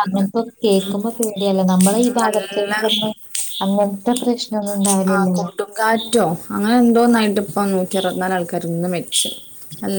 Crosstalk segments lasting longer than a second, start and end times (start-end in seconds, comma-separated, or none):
1.2-2.8